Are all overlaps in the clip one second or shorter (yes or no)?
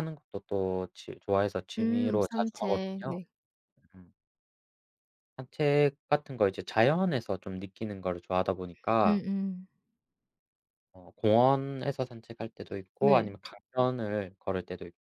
no